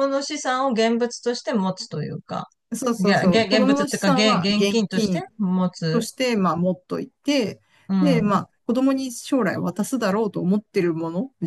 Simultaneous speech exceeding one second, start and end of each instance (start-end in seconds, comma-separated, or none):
3.0-5.2